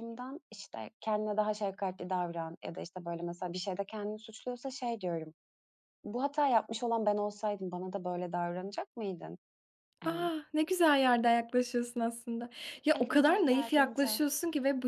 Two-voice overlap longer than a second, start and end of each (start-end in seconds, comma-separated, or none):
12.9-14.2